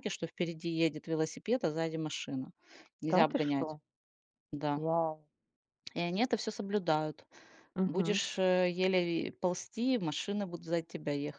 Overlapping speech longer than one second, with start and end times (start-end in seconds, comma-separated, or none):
none